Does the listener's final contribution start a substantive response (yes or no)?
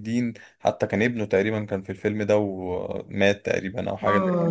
yes